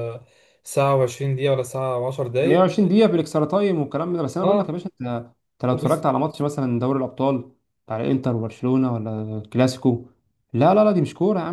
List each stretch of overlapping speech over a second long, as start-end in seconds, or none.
none